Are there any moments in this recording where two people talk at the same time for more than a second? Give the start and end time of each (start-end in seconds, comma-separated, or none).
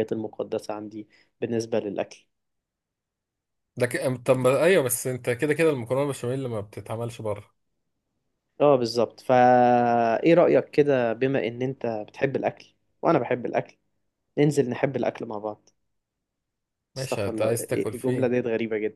17.0-18.3